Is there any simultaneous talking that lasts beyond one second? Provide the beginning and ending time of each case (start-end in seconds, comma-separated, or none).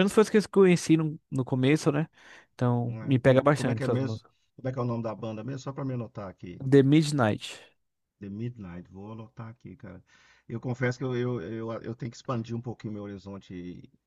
2.8-4.3